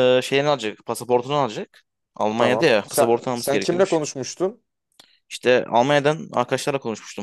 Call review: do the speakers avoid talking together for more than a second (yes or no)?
no